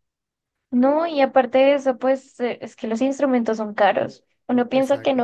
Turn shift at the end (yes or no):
no